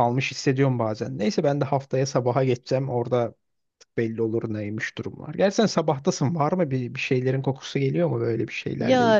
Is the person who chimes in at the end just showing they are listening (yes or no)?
no